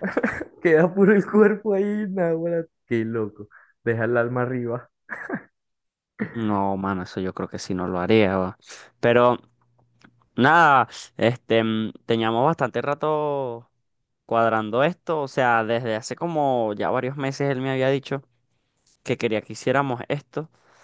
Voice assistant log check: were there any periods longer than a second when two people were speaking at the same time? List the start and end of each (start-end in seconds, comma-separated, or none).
none